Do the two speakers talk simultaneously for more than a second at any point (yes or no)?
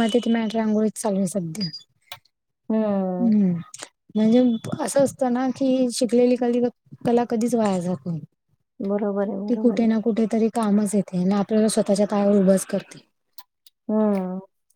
no